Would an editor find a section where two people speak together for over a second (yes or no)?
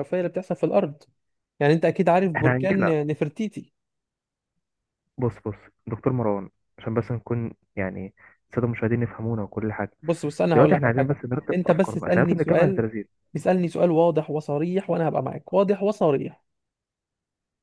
yes